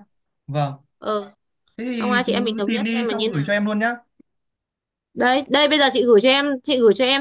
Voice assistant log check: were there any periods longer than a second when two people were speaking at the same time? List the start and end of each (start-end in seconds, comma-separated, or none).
1.9-3.5